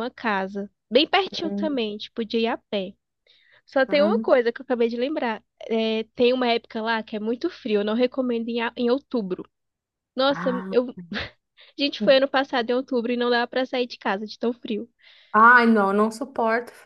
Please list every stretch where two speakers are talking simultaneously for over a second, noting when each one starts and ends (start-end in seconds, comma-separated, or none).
none